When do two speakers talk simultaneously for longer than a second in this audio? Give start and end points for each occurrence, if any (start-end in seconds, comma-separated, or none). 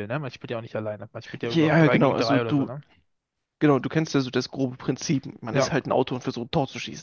1.4-2.7